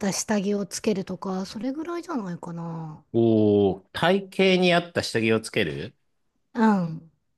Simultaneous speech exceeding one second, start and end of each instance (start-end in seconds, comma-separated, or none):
none